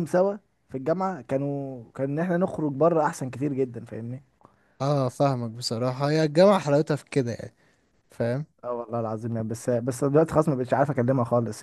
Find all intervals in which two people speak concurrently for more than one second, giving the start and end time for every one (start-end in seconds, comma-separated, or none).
none